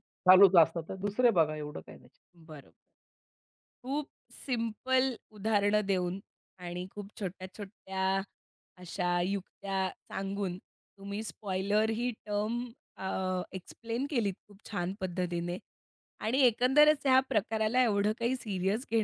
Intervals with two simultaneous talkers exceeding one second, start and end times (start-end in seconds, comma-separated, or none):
none